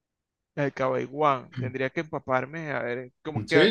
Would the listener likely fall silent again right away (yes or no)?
no